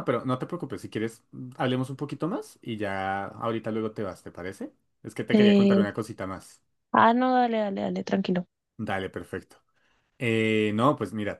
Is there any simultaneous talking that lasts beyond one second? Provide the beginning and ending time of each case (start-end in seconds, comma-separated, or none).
none